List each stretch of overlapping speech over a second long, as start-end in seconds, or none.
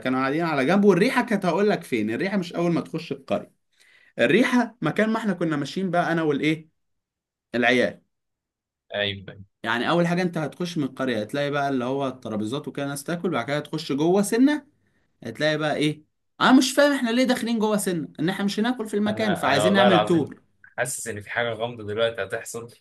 19.1-20.3